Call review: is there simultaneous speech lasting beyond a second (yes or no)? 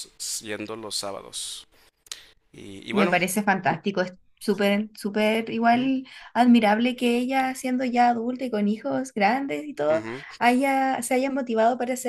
no